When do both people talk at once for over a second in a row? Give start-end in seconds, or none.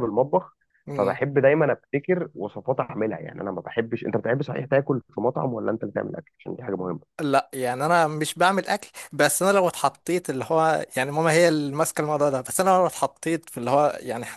none